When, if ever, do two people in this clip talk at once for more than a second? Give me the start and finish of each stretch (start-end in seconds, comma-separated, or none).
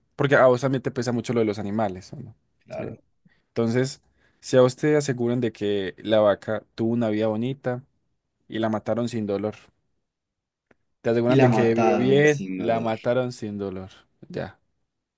11.3-12.9